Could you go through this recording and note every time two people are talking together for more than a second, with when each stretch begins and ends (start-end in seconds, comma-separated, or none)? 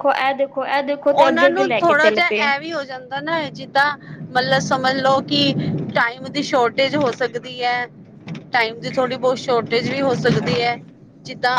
1.1-2.5